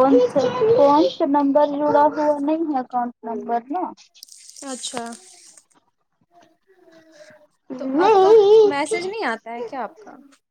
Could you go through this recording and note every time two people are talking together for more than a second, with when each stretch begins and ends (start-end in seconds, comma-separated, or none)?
none